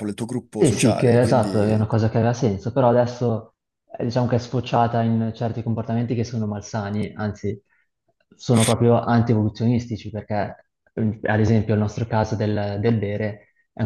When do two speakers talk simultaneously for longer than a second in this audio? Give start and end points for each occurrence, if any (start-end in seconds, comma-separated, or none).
0.6-1.9